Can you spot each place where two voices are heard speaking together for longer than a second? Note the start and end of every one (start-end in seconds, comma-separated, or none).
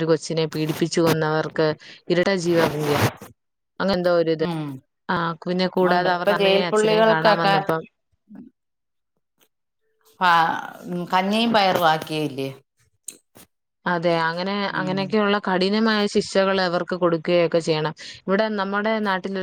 5.9-7.5